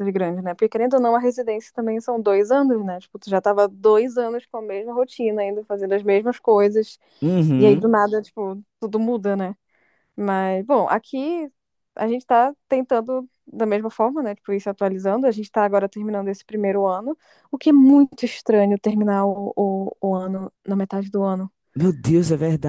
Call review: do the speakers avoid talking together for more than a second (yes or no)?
yes